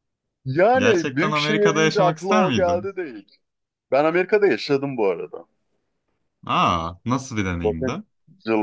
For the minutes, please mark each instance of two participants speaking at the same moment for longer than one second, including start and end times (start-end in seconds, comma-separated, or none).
0.8-2.9